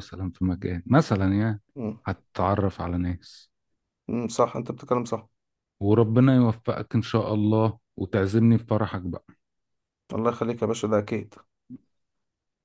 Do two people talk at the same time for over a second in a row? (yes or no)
no